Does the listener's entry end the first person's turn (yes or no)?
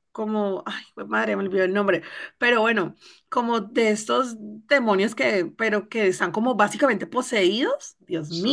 no